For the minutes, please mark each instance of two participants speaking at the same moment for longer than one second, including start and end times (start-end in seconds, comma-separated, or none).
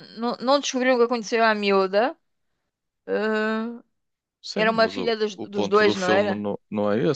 4.5-6.5